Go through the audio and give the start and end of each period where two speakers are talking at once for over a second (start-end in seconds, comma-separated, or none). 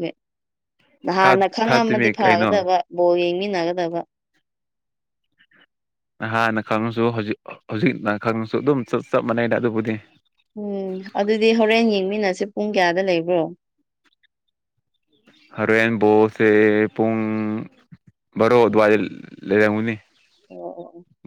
1.2-2.6